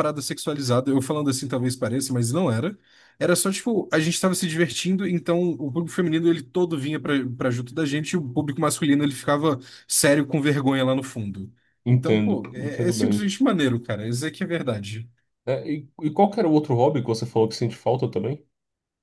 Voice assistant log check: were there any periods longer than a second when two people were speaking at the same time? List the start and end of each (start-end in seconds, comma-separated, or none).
11.9-13.3